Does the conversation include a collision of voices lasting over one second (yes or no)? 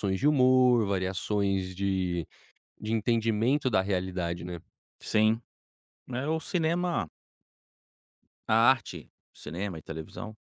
no